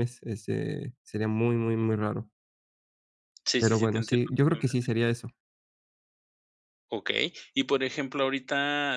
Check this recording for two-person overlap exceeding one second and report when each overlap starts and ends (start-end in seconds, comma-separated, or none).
3.6-4.9